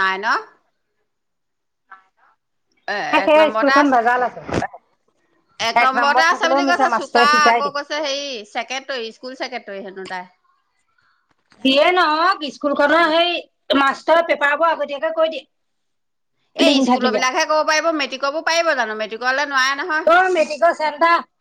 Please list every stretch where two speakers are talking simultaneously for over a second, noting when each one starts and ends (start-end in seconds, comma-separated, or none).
6.0-7.8